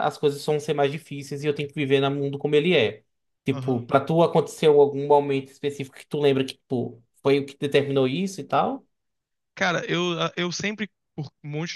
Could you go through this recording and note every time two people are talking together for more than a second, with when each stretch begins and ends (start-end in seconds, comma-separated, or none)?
none